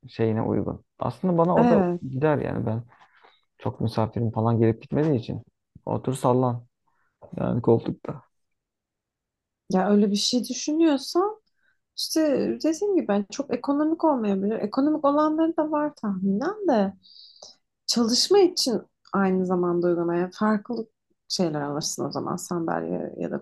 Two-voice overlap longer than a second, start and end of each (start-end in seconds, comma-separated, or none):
none